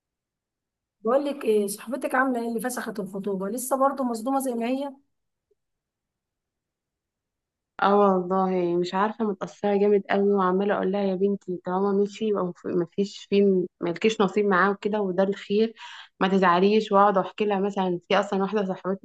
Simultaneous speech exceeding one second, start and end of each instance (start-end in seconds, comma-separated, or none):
none